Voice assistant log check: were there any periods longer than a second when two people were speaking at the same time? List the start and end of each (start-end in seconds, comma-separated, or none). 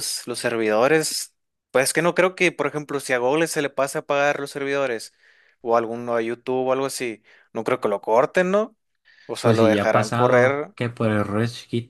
9.4-10.7